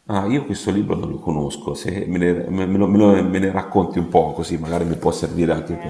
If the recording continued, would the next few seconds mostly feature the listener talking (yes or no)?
yes